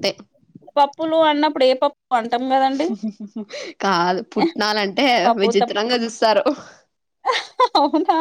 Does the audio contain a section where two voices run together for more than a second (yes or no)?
no